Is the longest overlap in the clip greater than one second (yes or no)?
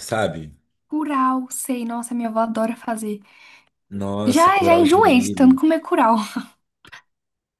yes